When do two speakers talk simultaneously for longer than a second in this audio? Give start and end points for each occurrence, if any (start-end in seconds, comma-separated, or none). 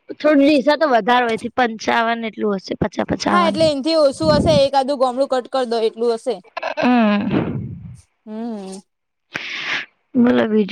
none